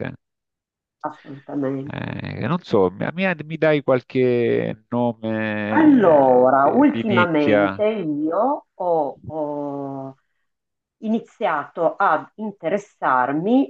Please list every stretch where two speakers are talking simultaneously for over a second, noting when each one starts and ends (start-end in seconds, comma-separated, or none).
5.7-7.8